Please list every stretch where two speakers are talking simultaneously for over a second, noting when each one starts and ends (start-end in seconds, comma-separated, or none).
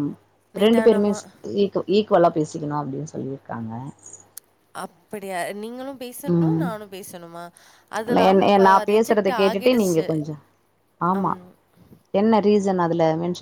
8.3-10.1